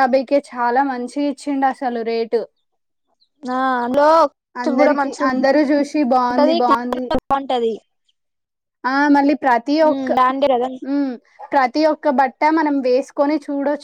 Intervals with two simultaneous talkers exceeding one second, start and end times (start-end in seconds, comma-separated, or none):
4.8-7.0